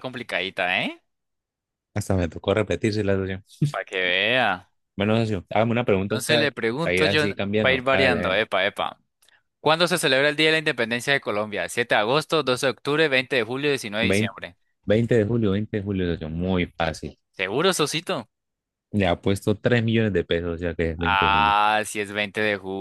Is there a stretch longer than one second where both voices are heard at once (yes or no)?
yes